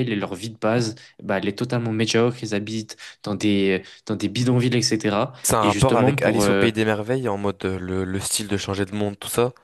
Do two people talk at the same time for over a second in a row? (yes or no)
yes